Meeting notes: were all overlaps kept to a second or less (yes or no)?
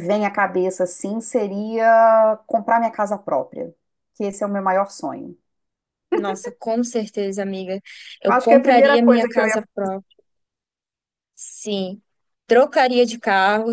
no